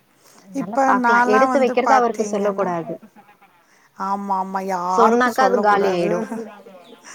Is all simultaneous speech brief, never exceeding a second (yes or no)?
no